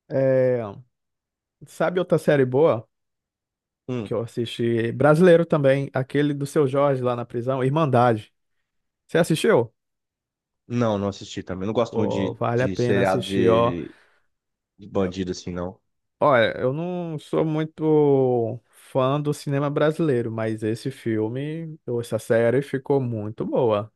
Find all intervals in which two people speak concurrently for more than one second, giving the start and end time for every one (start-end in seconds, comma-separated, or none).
11.9-13.8